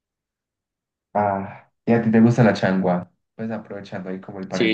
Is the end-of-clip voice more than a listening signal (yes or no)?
yes